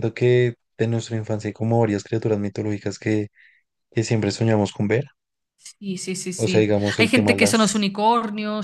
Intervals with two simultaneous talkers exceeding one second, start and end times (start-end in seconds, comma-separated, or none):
6.3-7.9